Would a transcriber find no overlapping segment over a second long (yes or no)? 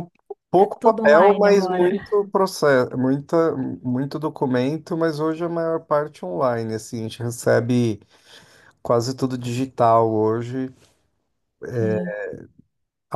no